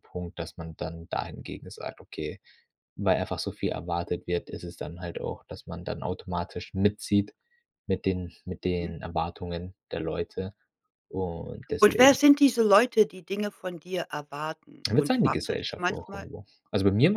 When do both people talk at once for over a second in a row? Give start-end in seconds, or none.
14.9-16.3